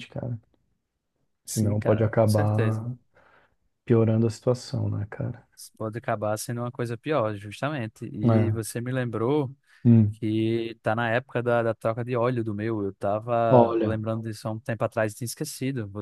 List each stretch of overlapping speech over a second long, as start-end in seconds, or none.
1.4-2.9